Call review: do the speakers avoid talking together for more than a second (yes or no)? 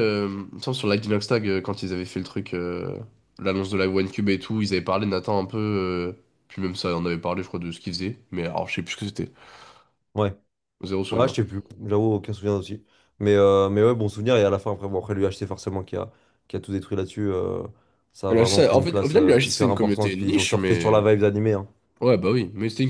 no